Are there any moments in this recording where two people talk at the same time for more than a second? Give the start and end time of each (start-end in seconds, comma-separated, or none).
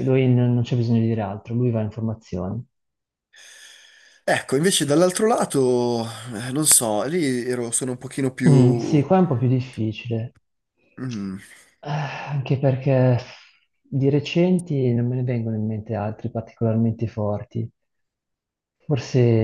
none